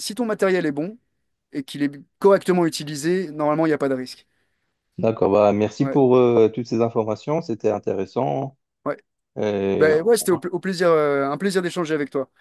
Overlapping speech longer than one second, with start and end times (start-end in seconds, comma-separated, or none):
none